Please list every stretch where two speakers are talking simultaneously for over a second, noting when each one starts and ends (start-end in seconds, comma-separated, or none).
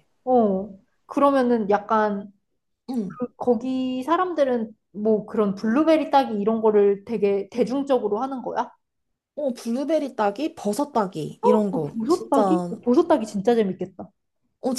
11.4-12.7